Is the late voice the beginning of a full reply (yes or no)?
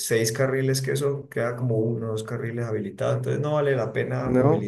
no